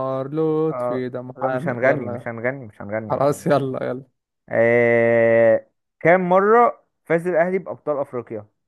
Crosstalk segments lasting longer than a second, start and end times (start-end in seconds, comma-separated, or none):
0.7-2.3